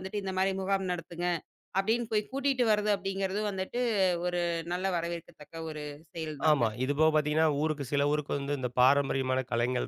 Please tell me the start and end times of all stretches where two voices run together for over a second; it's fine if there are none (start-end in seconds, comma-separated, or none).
none